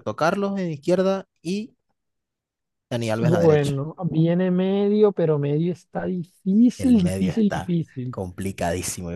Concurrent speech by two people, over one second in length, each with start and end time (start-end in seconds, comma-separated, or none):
6.8-8.2